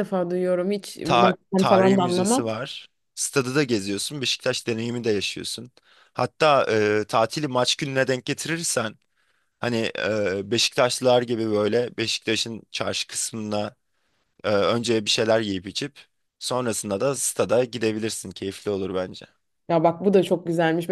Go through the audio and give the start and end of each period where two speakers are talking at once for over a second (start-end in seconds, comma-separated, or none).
1.0-2.5